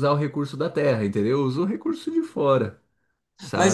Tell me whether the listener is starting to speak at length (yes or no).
yes